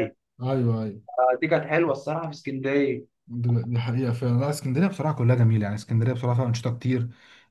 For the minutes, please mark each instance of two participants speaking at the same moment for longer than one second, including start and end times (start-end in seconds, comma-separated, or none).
none